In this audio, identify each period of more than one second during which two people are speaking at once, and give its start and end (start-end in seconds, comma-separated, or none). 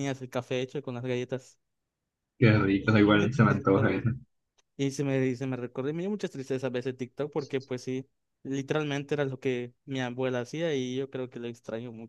2.8-4.1